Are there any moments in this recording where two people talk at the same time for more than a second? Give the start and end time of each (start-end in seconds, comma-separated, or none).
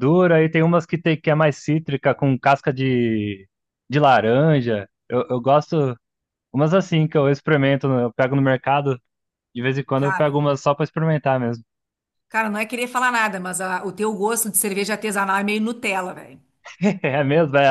none